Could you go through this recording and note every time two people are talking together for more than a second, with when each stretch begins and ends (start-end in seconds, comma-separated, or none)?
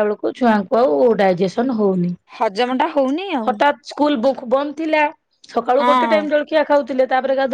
none